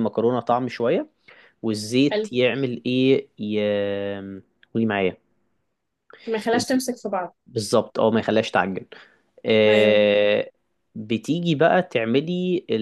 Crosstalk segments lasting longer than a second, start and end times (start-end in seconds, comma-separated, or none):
none